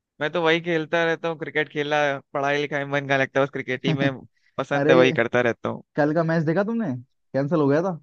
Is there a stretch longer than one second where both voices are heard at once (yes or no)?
no